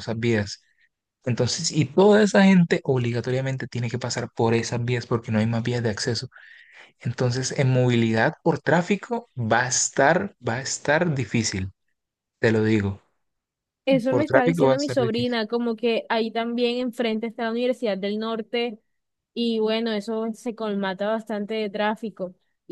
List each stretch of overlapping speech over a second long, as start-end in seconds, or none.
14.1-15.3